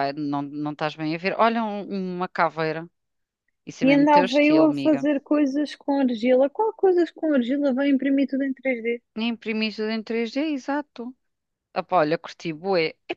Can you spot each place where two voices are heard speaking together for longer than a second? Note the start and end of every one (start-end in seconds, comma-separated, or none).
3.8-5.1